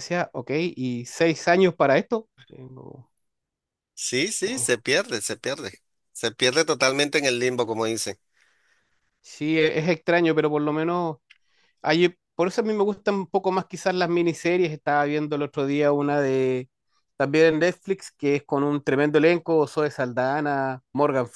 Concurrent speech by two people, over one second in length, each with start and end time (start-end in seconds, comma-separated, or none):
none